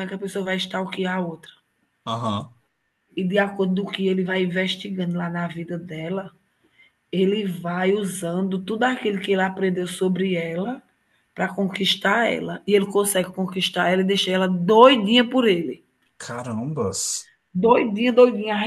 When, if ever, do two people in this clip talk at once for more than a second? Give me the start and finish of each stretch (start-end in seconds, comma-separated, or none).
none